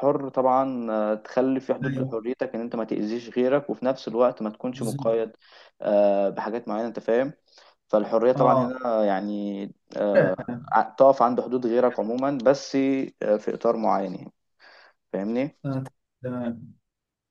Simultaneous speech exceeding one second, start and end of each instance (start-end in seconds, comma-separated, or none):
none